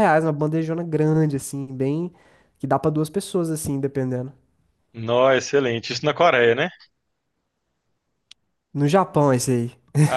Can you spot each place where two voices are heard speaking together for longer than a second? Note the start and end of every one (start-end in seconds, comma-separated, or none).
none